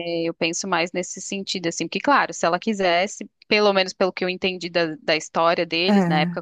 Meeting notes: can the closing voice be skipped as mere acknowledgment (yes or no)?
yes